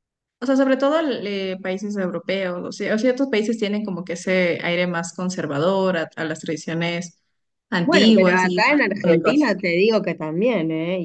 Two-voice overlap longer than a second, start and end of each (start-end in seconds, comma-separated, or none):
7.8-9.5